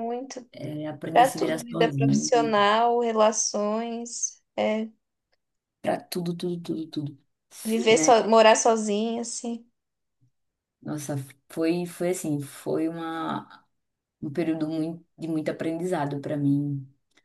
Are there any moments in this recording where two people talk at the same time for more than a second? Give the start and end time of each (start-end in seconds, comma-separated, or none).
1.1-2.5